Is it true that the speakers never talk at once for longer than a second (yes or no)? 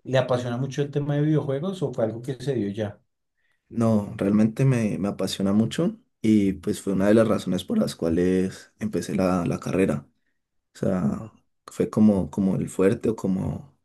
yes